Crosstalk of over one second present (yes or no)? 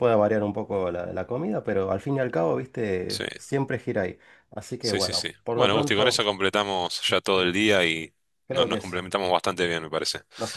yes